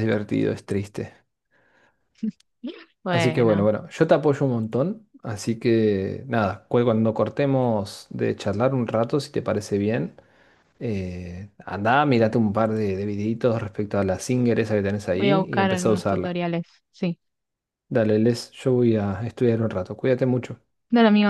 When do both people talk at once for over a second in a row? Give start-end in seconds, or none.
15.1-16.4